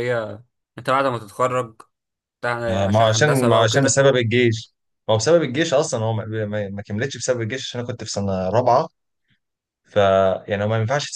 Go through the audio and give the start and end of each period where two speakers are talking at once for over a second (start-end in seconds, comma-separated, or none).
2.7-4.0